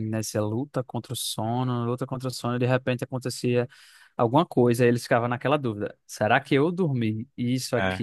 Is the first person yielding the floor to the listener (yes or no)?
no